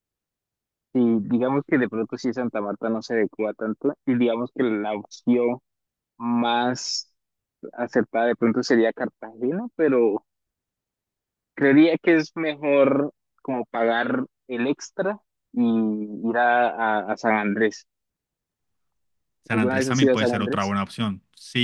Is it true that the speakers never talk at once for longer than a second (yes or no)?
no